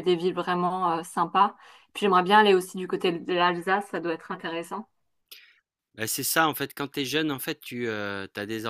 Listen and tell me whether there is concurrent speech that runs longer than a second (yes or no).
no